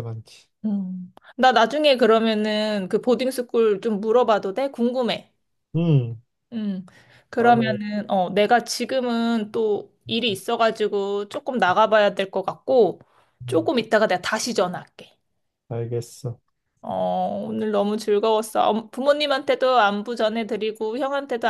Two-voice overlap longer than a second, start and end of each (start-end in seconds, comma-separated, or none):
none